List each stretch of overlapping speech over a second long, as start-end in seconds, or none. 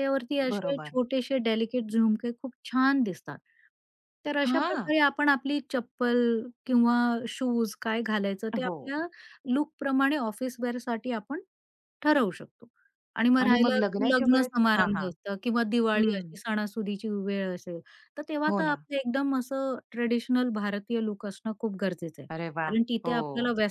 13.4-15.1